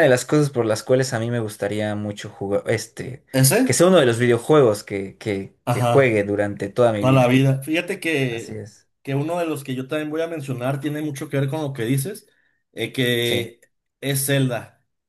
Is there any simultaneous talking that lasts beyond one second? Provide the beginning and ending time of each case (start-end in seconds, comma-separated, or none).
none